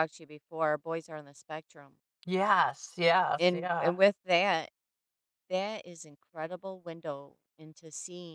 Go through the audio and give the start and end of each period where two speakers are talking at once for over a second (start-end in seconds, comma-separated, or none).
none